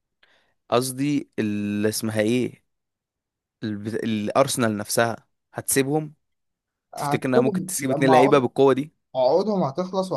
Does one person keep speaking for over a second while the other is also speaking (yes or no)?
yes